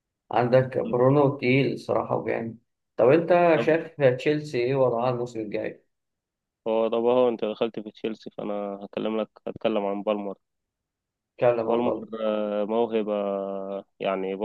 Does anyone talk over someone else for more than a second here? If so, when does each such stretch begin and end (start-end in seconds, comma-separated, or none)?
none